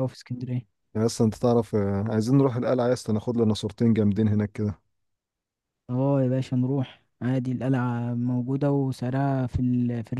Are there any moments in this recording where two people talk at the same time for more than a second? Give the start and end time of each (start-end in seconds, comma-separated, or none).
none